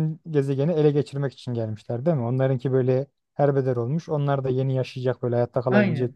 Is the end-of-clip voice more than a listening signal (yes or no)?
yes